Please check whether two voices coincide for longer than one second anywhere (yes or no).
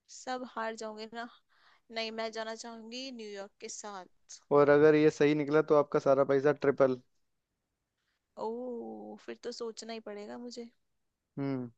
no